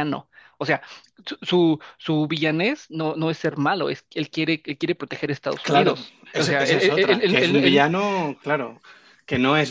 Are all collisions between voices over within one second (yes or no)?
no